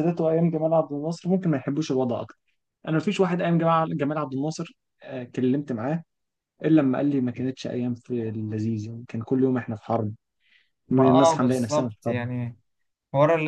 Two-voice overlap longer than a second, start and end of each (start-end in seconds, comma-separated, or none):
10.9-12.2